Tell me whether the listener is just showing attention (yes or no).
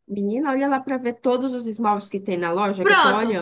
no